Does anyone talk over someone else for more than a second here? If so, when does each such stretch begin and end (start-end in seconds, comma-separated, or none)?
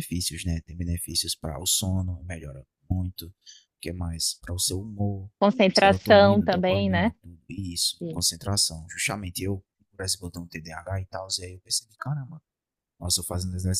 5.7-7.1